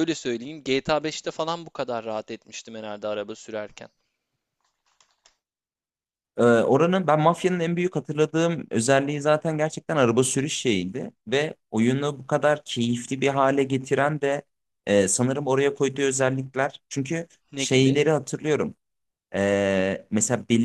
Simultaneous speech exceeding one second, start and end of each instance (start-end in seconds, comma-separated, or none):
none